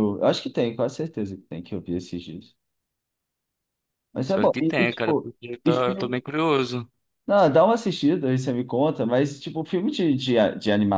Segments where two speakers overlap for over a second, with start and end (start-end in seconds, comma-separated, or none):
4.3-6.2